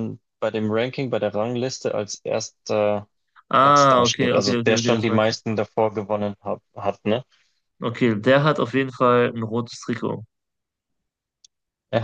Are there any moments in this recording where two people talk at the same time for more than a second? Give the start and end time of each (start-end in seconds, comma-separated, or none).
3.6-5.4